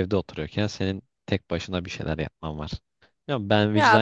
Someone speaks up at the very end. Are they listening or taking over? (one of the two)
listening